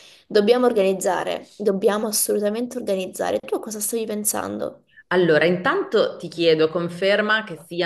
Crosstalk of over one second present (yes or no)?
no